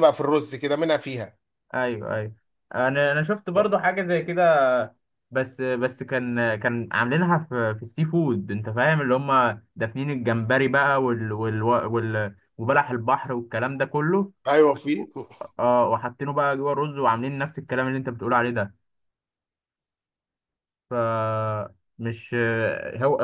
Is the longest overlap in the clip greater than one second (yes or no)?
no